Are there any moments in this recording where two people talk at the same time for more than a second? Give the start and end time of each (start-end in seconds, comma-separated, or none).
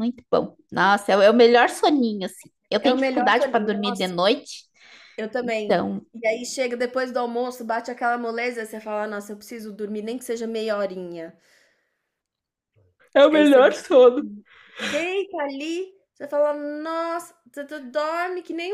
2.8-4.1